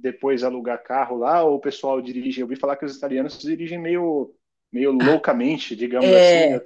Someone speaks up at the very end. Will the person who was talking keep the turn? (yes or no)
no